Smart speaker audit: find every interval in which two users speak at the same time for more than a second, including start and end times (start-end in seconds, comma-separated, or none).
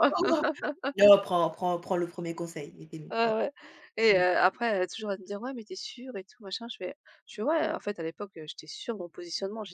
none